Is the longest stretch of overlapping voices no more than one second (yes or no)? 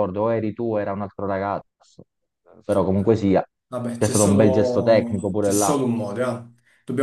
no